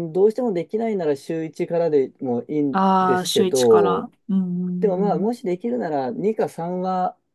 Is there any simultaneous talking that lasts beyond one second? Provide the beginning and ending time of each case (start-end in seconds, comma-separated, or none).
2.7-4.1